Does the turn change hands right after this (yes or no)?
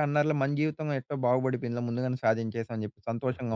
yes